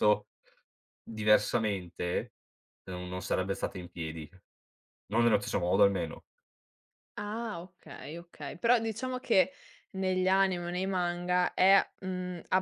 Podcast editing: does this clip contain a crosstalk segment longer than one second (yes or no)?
no